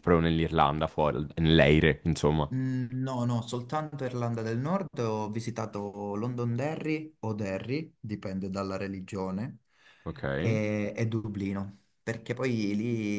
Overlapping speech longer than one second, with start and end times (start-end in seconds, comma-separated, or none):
none